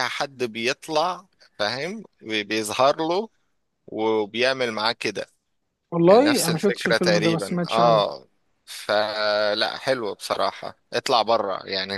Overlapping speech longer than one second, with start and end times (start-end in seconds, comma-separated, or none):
6.1-8.0